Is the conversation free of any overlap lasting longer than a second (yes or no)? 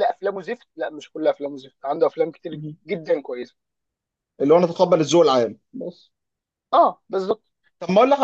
yes